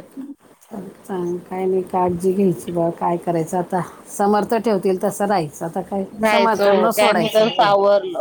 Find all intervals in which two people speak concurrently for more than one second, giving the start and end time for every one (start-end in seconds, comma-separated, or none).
6.2-7.7